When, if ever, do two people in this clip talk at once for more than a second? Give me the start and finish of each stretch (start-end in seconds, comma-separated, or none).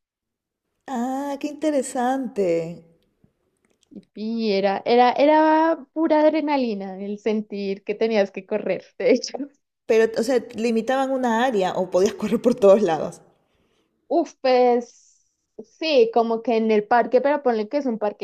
none